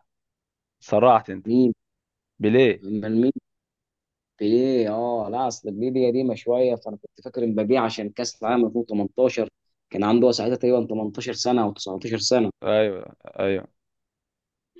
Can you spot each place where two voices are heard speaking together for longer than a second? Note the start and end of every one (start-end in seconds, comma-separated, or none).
none